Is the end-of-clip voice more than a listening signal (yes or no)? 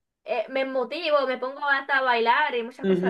yes